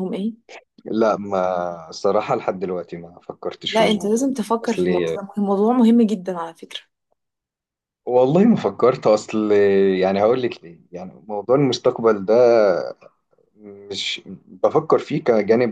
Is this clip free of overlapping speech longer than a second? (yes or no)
no